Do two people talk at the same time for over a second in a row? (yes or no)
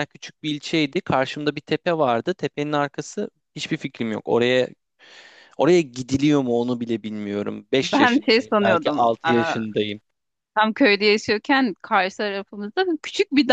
yes